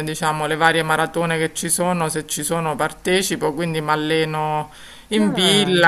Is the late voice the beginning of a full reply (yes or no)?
no